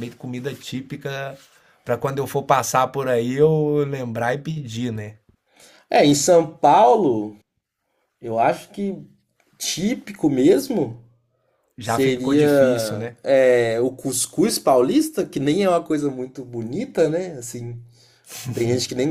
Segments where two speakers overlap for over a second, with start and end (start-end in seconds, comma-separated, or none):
11.8-13.2